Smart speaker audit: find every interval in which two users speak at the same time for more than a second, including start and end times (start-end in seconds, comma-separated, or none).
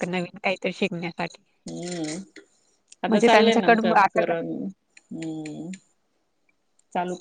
3.1-4.3